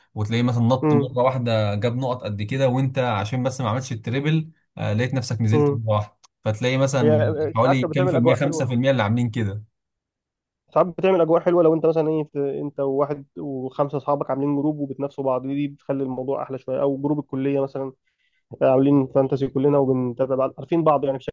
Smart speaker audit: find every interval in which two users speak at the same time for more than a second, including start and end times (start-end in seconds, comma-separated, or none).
7.0-8.7